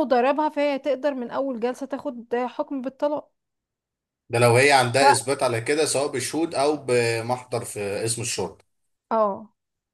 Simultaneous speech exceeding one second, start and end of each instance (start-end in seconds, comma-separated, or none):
none